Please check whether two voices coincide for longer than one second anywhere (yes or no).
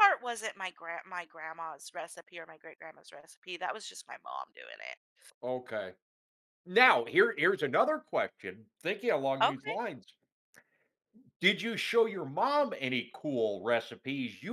no